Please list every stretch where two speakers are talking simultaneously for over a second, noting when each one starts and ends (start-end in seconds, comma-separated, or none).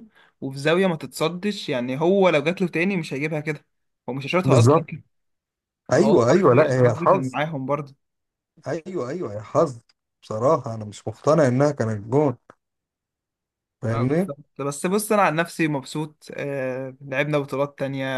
5.9-7.4